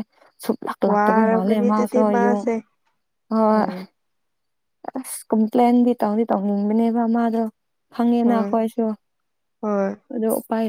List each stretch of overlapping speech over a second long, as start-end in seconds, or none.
0.9-2.4